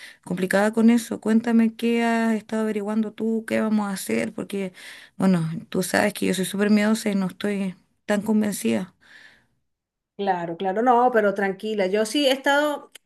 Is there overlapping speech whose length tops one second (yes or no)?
no